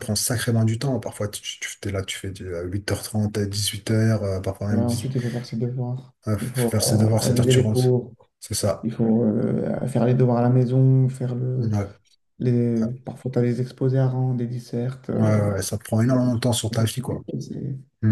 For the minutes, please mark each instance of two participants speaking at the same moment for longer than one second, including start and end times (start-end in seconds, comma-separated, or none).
6.3-7.9